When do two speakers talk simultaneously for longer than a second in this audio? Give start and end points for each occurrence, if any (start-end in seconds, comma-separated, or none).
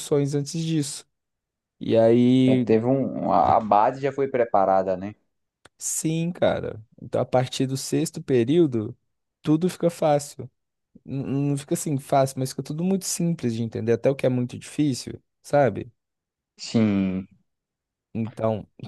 none